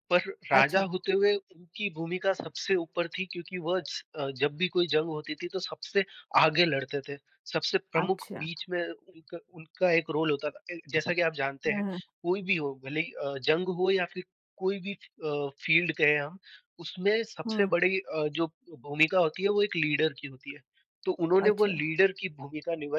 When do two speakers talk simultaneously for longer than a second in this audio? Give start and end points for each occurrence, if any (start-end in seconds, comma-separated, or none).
none